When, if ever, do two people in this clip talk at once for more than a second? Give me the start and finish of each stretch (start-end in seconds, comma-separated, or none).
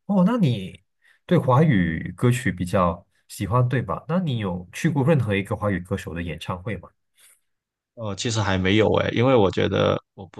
none